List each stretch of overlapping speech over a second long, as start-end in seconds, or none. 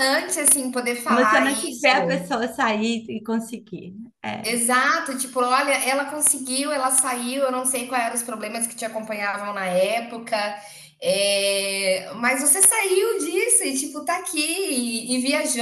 1.1-2.4